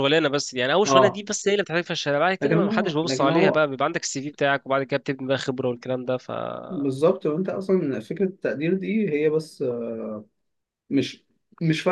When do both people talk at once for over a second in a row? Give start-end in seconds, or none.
2.4-3.6